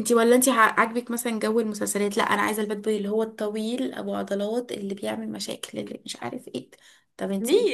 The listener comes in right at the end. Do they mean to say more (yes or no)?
yes